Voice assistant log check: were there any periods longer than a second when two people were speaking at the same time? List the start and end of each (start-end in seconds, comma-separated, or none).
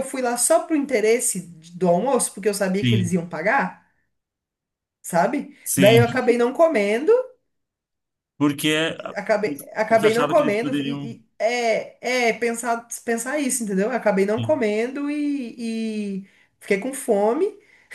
9.9-11.1